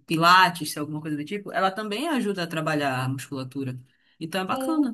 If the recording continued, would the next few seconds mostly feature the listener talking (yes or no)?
yes